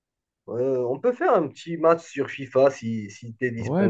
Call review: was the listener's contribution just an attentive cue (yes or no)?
no